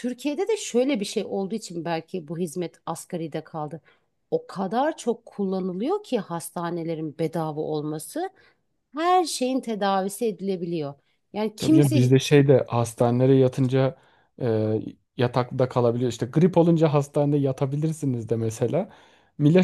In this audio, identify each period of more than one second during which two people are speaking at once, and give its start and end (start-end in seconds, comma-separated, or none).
none